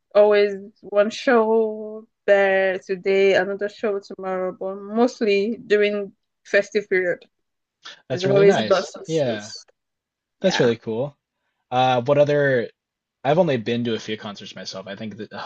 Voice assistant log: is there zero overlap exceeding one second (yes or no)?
no